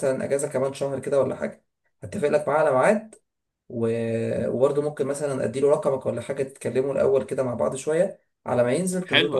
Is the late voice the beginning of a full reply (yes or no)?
yes